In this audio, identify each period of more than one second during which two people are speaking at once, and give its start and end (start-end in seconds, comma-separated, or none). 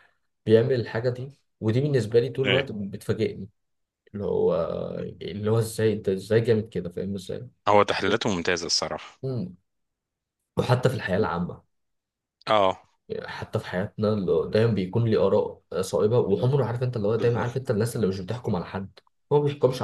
none